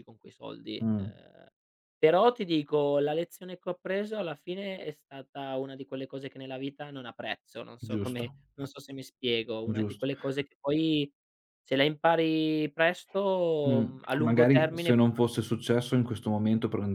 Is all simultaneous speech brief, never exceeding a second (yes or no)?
no